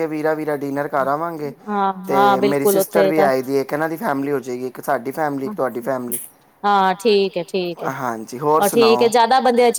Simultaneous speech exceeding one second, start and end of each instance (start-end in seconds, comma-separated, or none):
2.1-3.3